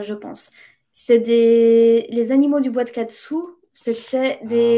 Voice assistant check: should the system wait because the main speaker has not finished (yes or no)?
no